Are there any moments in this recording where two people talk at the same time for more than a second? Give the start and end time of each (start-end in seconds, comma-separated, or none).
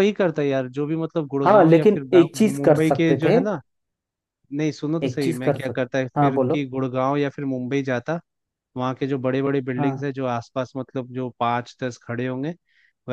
1.4-3.4, 5.0-6.6